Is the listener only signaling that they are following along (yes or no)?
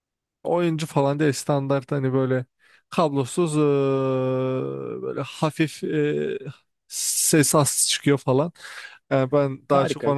yes